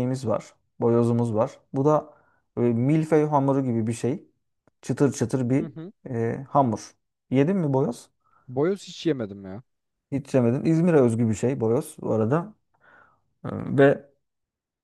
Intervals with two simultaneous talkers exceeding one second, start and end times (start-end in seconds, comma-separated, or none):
none